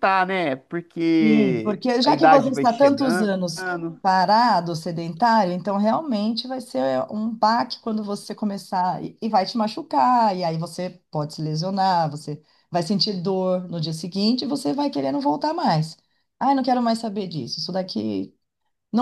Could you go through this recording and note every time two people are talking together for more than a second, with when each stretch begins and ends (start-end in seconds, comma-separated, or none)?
1.2-3.3